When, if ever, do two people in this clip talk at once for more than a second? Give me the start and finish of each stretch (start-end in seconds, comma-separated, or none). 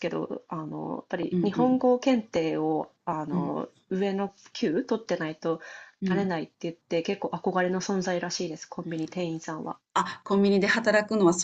none